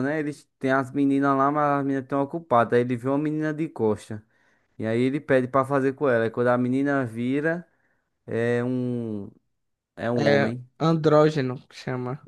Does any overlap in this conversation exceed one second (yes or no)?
no